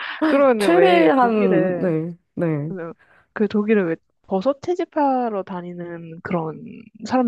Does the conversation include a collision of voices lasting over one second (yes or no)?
yes